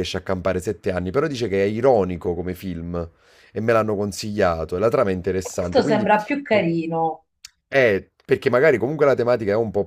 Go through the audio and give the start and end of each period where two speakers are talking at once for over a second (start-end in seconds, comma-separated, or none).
none